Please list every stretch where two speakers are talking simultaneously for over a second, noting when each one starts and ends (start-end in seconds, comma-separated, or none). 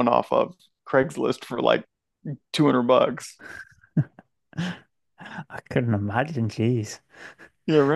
none